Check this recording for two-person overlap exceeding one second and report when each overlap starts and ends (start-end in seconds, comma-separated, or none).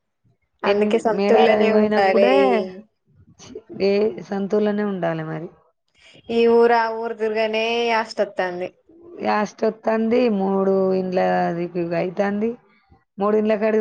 0.7-2.3